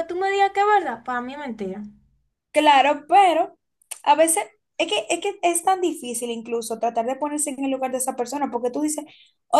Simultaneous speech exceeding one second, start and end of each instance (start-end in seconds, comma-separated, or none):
none